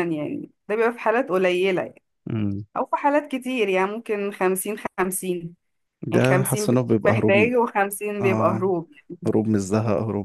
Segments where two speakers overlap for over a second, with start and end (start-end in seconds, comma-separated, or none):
6.1-7.5